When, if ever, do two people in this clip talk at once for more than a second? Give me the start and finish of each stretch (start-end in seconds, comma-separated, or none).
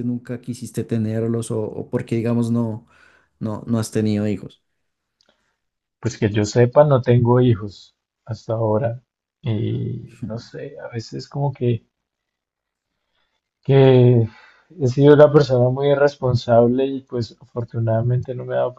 none